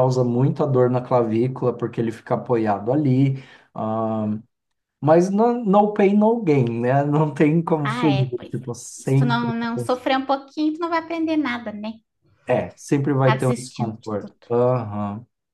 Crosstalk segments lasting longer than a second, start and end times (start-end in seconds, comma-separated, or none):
7.8-9.5, 13.2-14.6